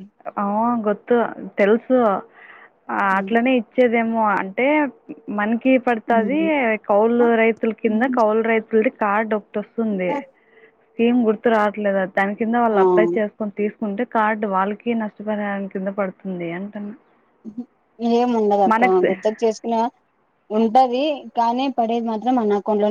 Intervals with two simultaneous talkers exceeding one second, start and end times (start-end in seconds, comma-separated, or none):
none